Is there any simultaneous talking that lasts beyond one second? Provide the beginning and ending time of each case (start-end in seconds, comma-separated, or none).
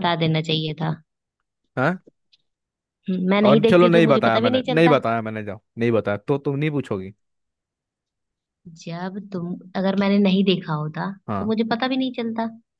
3.5-5.0